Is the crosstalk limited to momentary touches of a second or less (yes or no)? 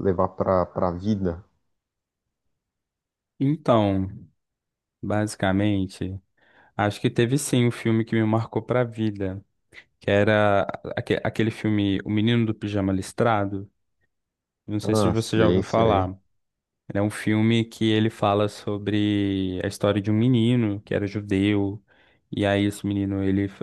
no